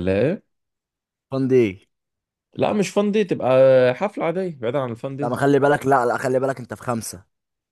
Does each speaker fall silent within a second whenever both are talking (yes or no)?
yes